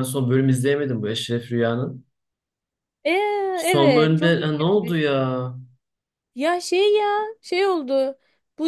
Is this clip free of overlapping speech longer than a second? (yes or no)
no